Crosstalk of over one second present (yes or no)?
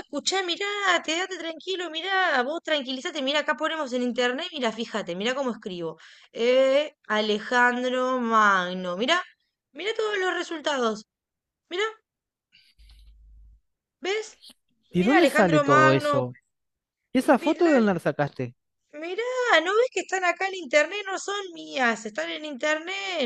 yes